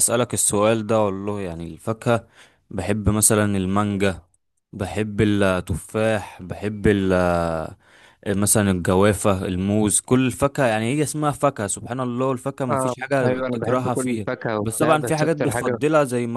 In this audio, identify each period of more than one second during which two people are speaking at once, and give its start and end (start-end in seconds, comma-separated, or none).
12.7-15.8